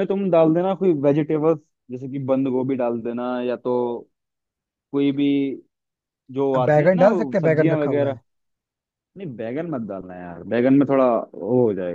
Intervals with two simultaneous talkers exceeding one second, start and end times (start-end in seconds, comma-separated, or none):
6.5-8.2